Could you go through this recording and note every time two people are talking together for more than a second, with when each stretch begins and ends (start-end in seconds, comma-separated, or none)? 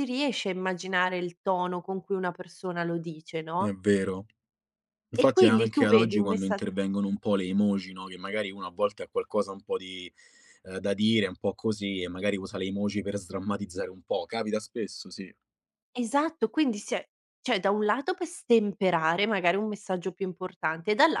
5.2-6.6